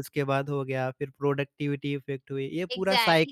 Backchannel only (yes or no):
no